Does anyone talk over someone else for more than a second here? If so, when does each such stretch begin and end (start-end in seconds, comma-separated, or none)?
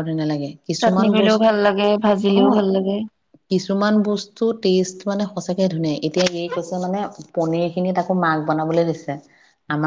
0.8-2.4